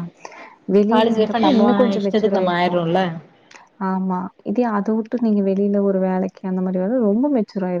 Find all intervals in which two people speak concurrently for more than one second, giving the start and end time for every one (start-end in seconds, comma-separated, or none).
0.9-2.7